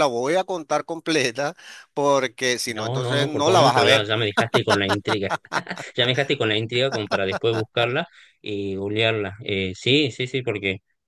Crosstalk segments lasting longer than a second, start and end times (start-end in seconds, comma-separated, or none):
2.6-4.1